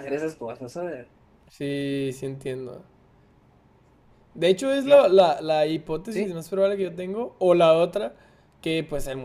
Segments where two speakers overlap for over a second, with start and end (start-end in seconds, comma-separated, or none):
none